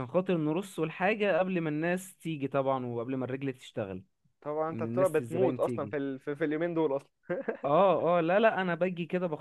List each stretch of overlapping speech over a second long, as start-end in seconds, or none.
4.7-6.0